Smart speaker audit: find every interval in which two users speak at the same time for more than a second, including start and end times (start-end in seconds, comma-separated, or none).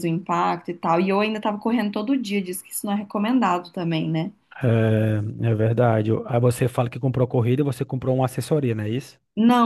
none